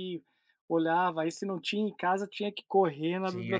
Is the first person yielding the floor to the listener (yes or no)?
yes